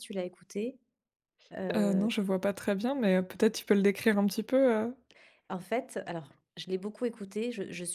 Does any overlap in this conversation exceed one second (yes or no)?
no